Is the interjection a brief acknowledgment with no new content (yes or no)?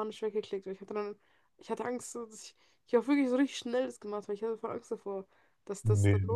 yes